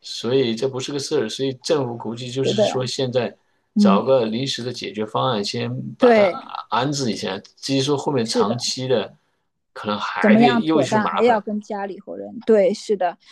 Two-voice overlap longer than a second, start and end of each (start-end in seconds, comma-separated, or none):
10.2-11.4